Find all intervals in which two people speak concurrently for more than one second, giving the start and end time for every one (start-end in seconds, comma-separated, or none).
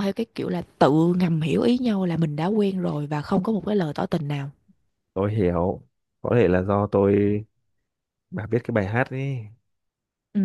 none